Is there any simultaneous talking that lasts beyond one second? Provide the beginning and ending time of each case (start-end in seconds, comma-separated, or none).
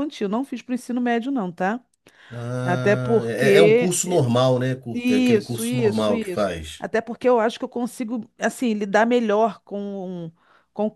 2.6-3.9, 4.9-6.9